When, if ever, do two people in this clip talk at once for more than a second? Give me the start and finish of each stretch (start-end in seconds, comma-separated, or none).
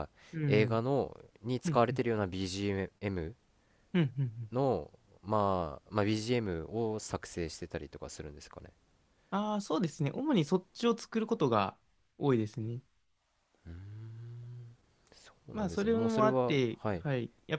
15.5-17.0